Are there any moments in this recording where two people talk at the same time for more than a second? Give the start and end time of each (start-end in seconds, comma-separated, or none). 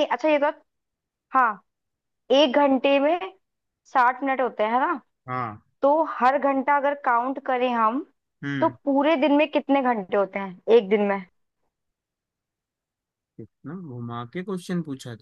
none